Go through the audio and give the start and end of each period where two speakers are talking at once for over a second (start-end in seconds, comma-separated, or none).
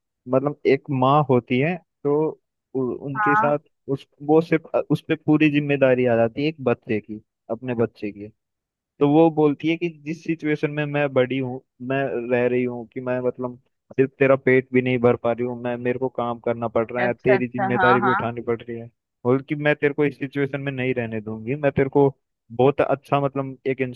17.0-18.3